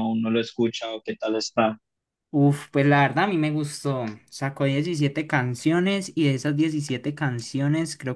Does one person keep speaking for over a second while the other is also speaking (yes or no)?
no